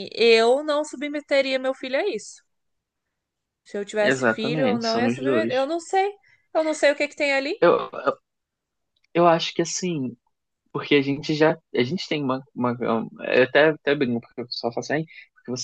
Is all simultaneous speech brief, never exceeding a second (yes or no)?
no